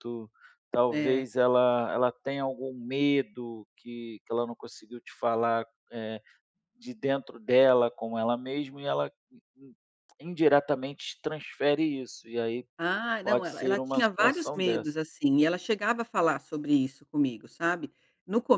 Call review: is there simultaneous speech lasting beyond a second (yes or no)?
yes